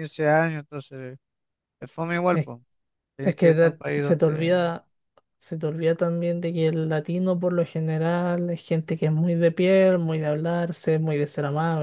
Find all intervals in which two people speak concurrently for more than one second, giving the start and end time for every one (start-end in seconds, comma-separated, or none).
3.2-4.6